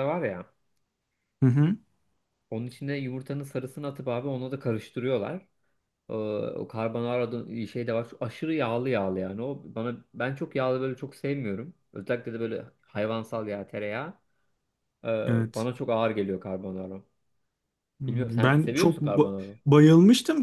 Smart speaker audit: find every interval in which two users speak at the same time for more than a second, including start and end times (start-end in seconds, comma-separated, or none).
18.1-19.6